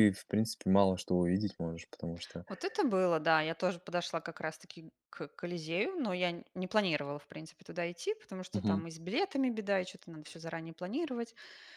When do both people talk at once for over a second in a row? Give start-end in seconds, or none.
none